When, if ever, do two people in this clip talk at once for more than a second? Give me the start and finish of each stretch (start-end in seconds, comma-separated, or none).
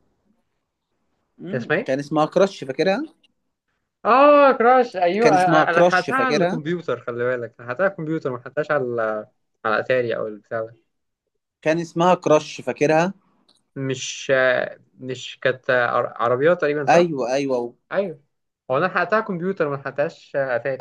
5.2-6.6